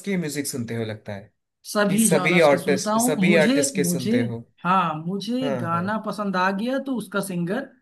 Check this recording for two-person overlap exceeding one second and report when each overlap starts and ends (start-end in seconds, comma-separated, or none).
1.9-4.1